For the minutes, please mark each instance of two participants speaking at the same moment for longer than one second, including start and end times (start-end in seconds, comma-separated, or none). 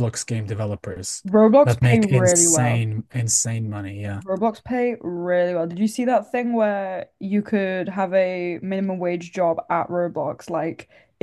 1.6-2.8